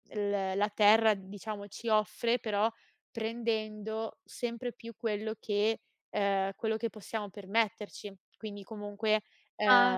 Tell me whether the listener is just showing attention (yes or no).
no